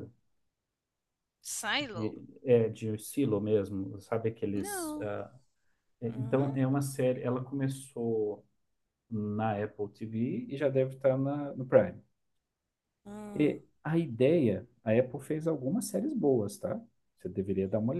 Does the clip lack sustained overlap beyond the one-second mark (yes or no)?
yes